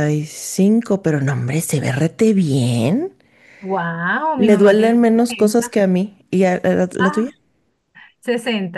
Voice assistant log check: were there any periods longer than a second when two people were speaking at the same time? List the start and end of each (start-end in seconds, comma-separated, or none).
4.4-5.8